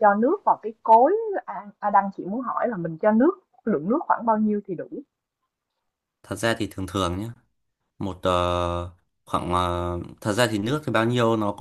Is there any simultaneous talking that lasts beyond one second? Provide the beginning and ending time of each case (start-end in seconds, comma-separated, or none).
none